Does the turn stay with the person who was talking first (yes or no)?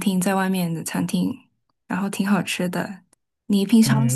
no